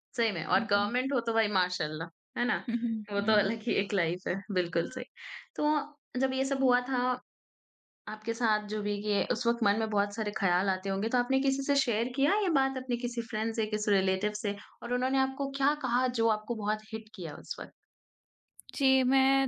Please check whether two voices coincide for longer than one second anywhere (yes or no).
no